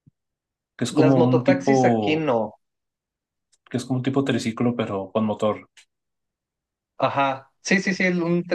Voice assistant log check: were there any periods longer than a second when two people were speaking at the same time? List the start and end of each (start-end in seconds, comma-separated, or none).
0.9-2.3